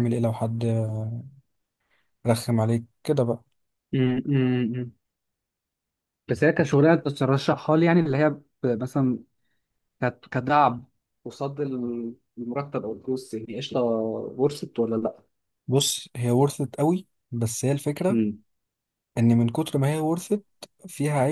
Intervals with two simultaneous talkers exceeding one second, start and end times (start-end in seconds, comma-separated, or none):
none